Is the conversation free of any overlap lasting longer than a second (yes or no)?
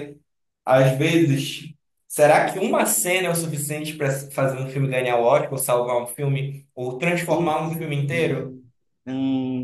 no